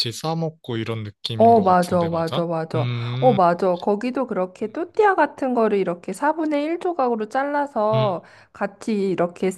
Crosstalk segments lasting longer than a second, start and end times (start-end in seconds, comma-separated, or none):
1.4-3.4